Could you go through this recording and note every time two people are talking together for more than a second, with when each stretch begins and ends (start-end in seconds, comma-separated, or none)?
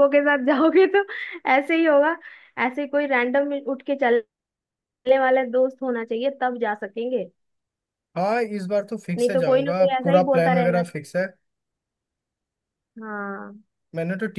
9.2-10.8